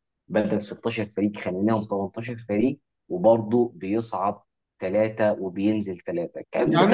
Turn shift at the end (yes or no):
yes